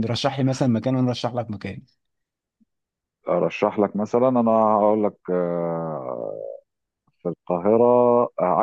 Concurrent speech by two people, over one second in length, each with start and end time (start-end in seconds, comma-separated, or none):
none